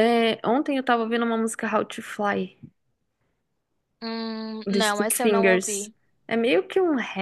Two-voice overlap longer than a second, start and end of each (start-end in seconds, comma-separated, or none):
4.7-5.9